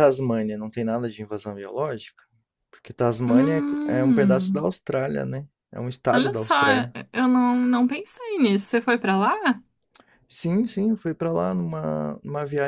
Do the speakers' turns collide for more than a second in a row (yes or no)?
yes